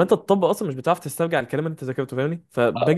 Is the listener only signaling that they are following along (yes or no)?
yes